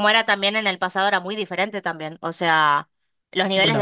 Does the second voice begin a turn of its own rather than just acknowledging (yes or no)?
no